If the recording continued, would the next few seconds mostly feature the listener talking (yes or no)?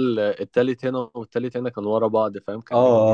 yes